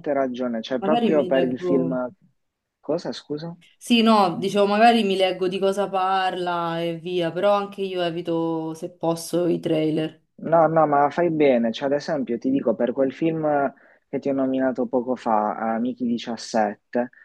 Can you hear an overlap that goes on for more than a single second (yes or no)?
yes